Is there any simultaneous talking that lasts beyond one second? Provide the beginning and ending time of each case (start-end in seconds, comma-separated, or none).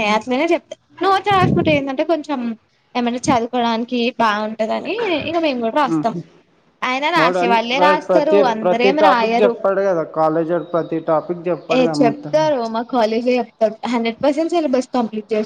7.2-9.5